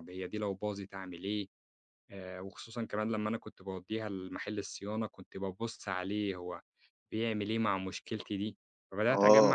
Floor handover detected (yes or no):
yes